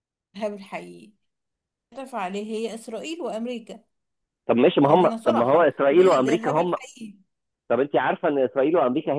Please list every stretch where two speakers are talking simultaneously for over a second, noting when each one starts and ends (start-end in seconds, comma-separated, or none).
4.8-6.8